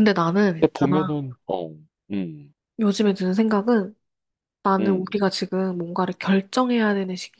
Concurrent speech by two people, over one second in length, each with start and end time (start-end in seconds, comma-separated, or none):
none